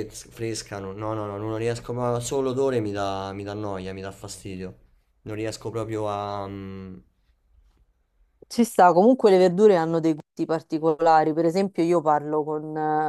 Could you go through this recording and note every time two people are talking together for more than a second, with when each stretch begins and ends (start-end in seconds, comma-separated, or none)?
none